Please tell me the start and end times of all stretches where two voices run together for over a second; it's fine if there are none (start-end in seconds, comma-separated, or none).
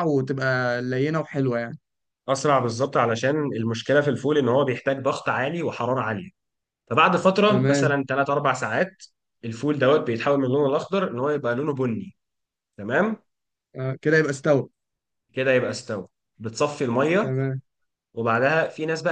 none